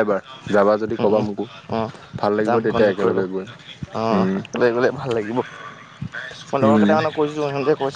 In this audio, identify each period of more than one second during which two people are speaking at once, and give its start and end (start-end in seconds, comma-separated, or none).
2.5-4.4